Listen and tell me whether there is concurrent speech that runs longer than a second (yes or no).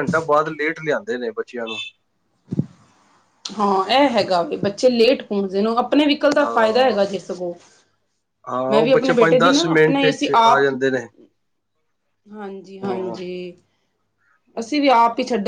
yes